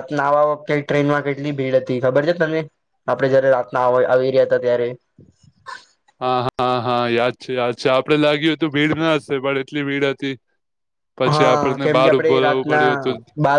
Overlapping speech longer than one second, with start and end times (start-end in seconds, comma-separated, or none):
11.3-12.9